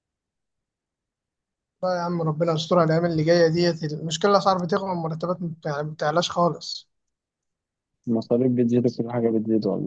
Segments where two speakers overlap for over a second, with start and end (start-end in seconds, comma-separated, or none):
none